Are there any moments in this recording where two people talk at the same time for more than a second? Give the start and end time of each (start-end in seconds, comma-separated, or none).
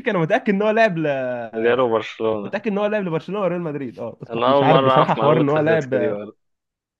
4.3-6.2